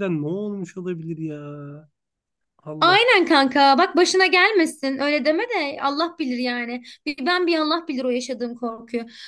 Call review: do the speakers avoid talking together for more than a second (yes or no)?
yes